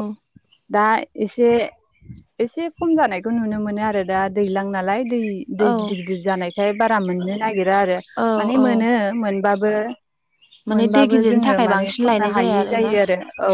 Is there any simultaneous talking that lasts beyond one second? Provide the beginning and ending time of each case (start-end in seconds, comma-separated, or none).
10.7-12.9